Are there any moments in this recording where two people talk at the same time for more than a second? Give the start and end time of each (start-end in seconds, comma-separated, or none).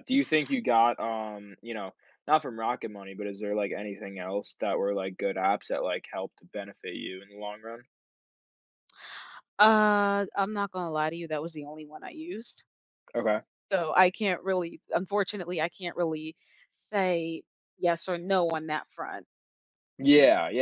none